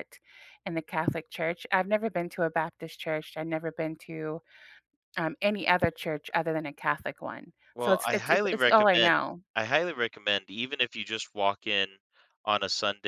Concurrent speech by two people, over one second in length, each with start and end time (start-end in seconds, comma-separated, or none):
7.7-9.4